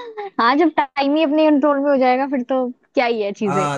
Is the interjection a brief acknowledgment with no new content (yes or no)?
no